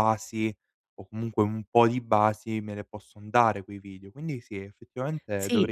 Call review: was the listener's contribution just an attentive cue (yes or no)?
no